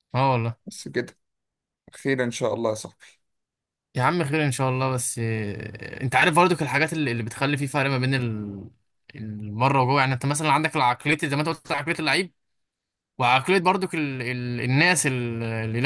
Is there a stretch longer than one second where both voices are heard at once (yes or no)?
no